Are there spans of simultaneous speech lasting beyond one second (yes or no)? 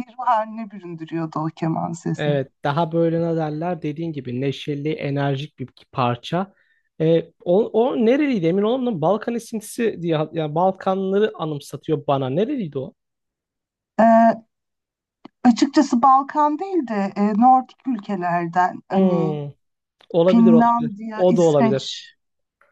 yes